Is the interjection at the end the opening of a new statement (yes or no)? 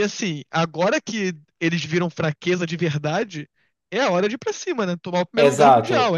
yes